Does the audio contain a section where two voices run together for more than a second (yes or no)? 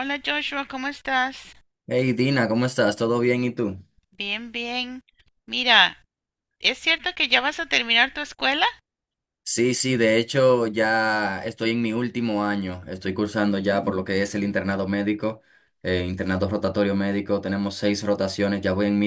no